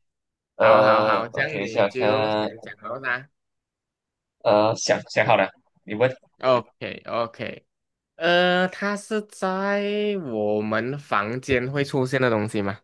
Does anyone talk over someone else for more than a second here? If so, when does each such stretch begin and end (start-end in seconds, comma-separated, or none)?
0.6-2.5